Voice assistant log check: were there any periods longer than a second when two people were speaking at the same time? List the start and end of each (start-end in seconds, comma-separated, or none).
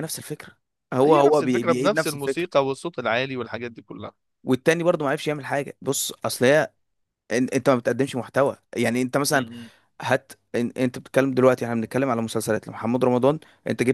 1.0-2.5